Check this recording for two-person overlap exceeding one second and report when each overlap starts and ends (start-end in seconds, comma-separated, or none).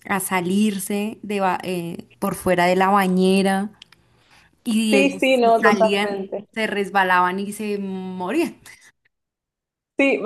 4.9-6.5